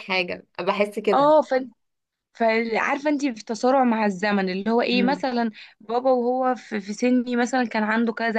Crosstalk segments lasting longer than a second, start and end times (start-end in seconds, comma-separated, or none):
none